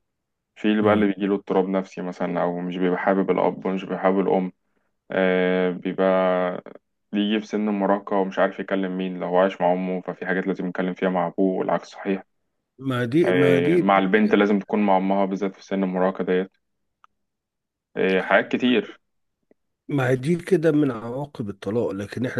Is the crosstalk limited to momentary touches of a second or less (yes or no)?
yes